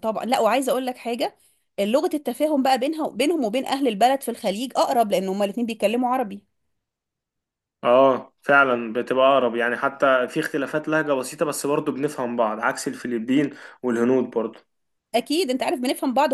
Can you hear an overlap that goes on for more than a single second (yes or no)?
no